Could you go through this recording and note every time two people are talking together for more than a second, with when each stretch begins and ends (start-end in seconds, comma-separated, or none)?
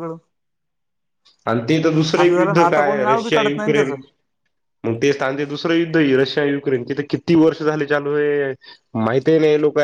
2.2-3.9